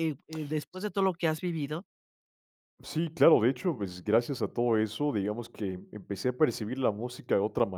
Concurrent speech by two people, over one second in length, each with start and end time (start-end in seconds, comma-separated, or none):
none